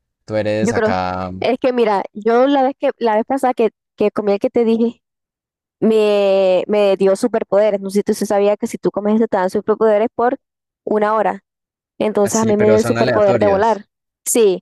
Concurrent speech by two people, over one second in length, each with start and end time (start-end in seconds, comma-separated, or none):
12.2-13.8